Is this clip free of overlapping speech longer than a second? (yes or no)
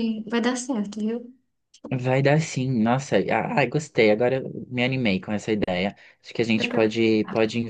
yes